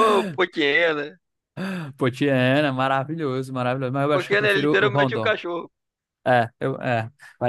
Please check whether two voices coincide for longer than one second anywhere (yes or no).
yes